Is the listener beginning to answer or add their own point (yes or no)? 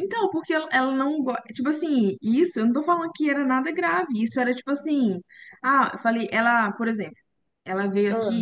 no